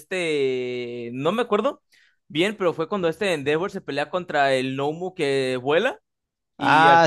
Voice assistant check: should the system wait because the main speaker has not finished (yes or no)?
yes